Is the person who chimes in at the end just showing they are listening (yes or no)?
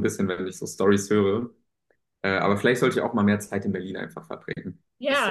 no